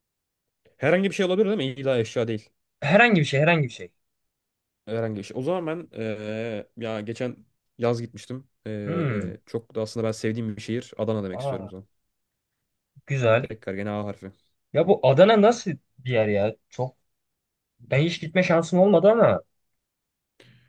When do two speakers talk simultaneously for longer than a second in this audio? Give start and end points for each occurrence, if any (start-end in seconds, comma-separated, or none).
none